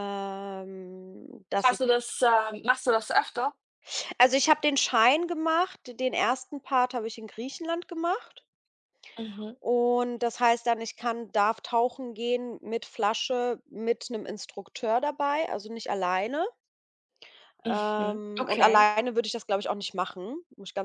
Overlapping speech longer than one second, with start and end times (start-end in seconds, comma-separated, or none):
17.6-18.9